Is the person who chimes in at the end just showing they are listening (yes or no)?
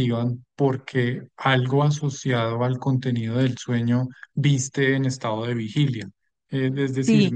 yes